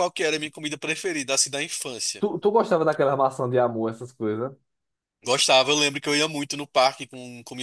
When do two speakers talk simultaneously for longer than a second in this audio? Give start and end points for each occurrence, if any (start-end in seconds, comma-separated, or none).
none